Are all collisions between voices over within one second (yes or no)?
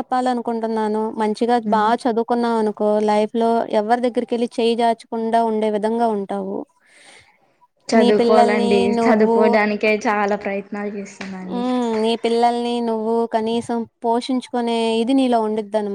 no